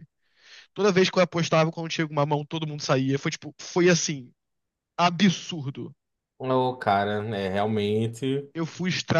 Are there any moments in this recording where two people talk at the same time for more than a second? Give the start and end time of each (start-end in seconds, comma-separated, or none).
none